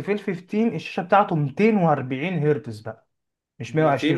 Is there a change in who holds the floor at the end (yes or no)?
yes